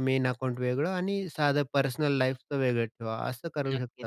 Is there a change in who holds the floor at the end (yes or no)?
yes